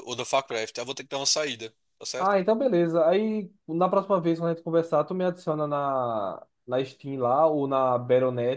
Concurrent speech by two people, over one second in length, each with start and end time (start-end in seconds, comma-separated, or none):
none